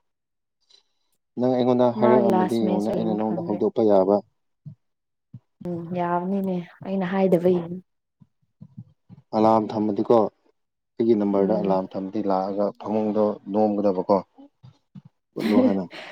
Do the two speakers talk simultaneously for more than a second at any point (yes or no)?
yes